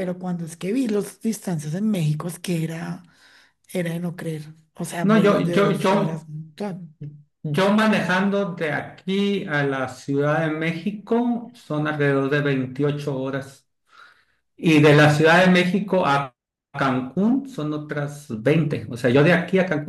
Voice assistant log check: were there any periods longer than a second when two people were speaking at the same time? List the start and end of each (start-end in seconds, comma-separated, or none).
5.0-6.3